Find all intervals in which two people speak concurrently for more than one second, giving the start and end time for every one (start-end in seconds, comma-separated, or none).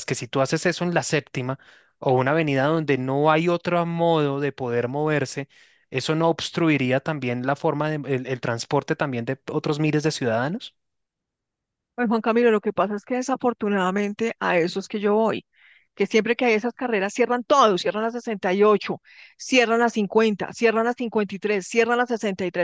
none